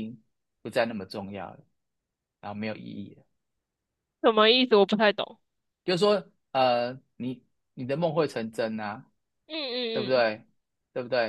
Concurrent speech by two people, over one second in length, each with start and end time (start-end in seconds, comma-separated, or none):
none